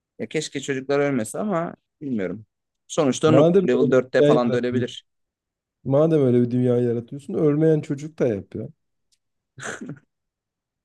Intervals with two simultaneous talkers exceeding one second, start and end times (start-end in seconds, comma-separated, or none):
3.2-4.8